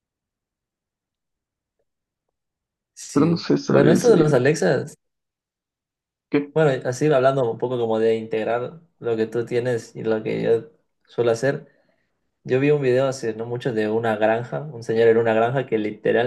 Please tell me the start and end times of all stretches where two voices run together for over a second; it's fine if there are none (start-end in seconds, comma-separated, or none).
3.1-4.4